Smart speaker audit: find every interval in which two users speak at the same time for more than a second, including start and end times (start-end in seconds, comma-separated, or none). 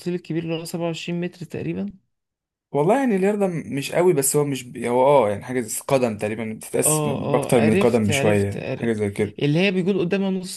6.8-8.9